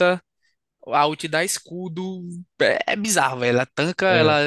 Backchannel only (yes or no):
yes